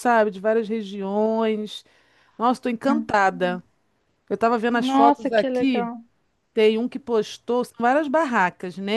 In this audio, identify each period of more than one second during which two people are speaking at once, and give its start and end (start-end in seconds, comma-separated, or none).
4.7-5.9